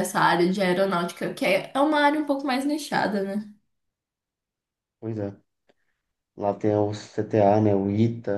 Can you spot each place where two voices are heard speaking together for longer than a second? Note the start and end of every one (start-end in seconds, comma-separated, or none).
none